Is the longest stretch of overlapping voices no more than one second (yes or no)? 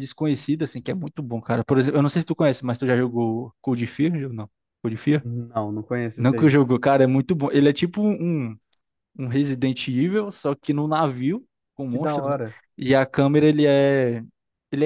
yes